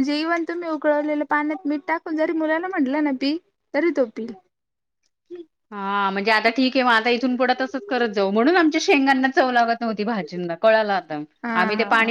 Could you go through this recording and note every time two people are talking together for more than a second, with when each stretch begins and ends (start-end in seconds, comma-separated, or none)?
none